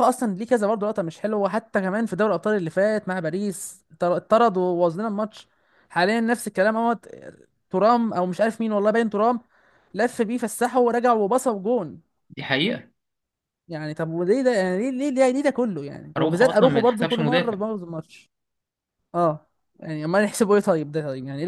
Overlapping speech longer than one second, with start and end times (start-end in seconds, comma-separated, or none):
16.2-17.6